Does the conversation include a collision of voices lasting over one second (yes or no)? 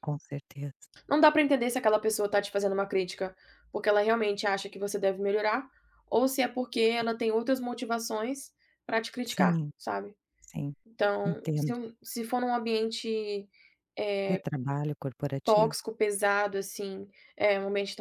no